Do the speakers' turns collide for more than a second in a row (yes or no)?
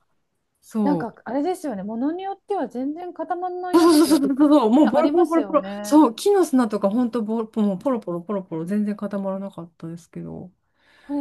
yes